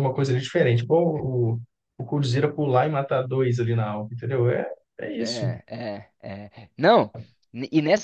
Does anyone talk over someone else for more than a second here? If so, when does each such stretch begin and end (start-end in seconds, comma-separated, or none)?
none